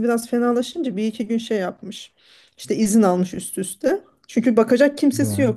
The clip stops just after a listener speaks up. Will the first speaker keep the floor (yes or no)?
yes